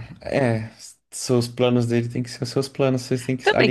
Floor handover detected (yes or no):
yes